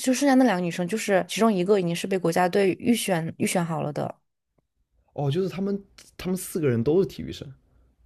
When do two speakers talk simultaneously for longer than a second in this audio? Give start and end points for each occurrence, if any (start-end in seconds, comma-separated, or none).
none